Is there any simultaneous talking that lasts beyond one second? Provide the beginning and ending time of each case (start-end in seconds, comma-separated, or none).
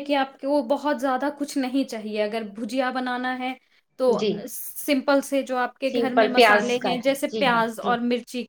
5.9-7.9